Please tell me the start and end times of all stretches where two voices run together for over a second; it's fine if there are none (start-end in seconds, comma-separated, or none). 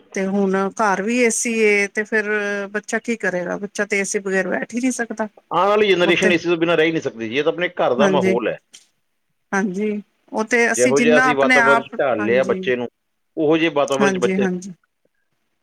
10.8-12.6